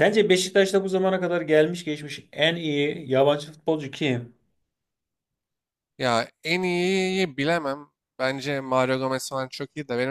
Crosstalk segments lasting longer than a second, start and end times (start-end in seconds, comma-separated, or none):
none